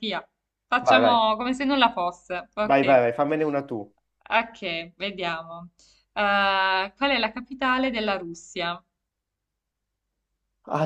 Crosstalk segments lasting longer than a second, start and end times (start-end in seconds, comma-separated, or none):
none